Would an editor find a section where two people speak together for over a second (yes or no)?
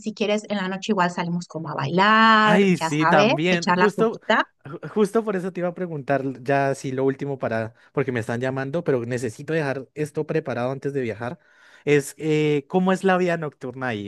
yes